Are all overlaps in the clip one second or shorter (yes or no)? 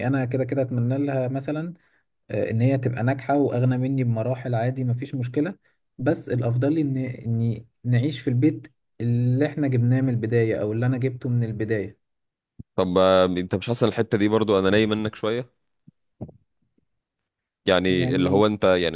yes